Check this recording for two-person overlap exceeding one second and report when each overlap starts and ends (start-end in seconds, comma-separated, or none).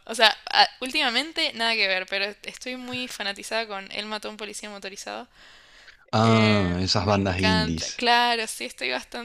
6.2-8.0